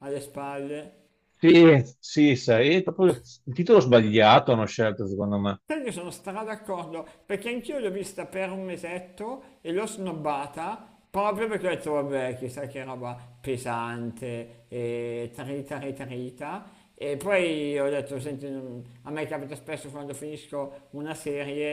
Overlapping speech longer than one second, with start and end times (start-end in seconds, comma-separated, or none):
none